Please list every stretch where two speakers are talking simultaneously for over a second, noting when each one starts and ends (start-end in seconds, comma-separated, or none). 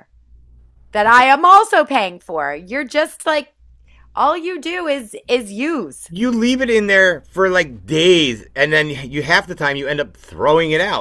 none